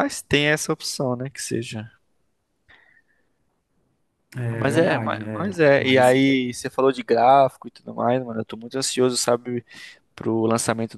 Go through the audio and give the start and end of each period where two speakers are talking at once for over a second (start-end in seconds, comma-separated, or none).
4.5-6.2